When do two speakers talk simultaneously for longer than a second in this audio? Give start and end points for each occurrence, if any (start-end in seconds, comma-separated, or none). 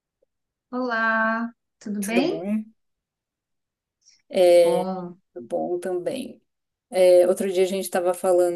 none